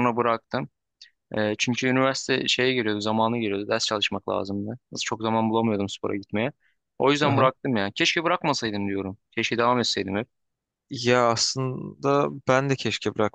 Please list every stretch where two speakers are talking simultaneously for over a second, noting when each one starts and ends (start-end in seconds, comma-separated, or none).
none